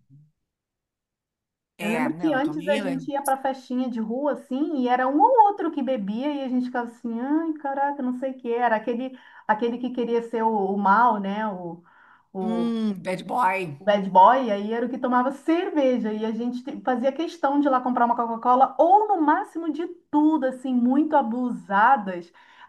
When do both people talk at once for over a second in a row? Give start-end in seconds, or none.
1.8-3.4